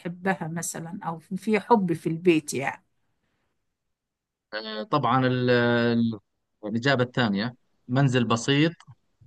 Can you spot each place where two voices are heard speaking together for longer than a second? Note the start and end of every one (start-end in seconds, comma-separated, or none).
none